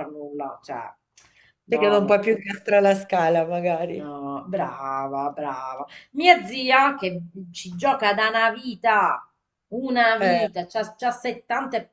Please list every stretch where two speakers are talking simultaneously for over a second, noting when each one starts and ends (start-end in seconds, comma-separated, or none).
none